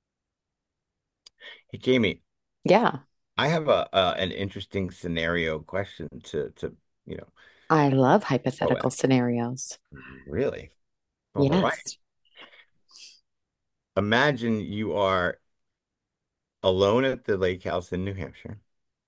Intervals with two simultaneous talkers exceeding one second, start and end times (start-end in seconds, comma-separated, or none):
none